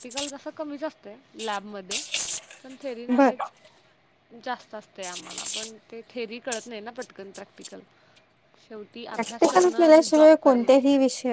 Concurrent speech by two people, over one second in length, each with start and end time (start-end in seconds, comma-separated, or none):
9.1-10.7